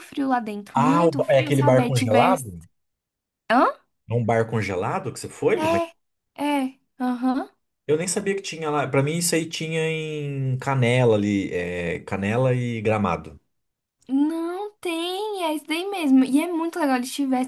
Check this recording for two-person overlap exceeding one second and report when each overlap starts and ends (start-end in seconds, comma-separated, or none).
0.7-2.5